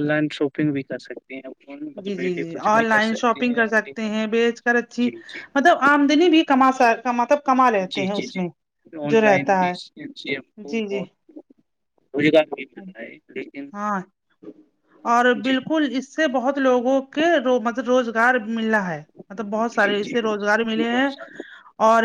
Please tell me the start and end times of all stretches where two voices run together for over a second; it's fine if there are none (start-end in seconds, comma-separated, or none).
1.9-4.1